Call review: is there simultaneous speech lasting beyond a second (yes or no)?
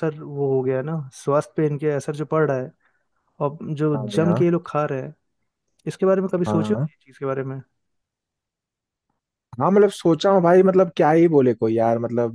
no